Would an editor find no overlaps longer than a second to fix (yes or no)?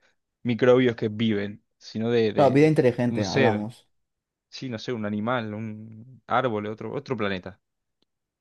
no